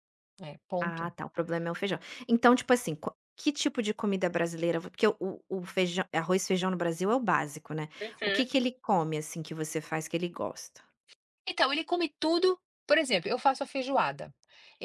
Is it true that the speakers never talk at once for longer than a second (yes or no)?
yes